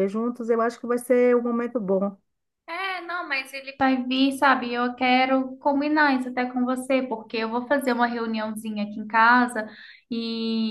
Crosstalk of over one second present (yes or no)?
no